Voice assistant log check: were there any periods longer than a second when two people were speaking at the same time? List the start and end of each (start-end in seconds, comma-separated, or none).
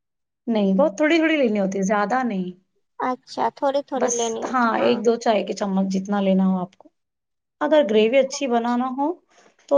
none